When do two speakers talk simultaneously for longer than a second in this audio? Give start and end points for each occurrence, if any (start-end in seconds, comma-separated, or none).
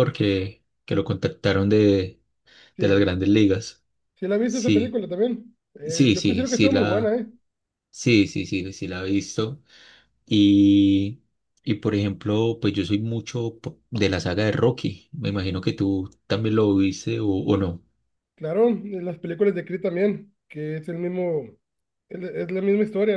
5.8-7.2